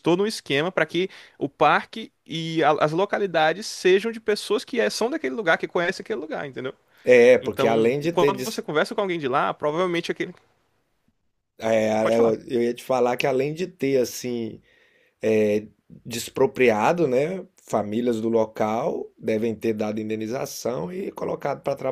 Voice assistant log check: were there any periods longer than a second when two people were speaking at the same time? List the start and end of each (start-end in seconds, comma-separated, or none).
7.4-8.6